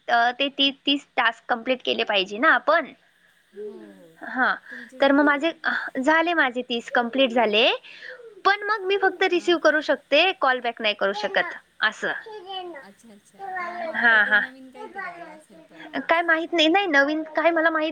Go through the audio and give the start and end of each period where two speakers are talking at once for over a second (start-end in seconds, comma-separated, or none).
none